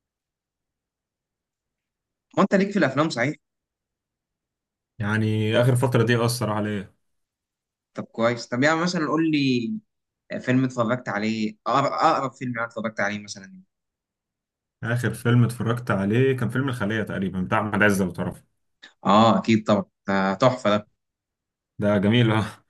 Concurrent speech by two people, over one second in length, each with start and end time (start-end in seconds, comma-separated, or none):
none